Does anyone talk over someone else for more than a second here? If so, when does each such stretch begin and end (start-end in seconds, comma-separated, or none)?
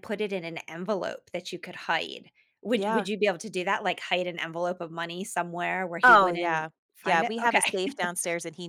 6.0-7.8